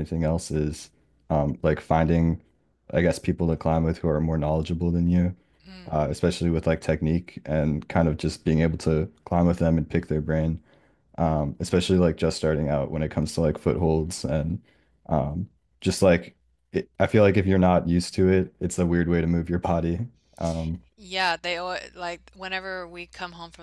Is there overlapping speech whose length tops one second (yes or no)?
no